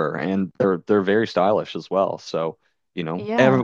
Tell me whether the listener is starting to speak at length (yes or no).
no